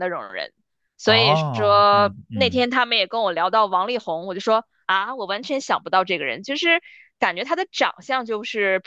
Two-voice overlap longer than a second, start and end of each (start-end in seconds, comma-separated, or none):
1.0-2.6